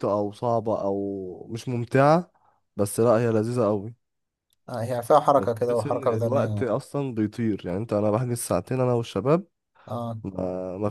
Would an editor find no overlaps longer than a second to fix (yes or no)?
no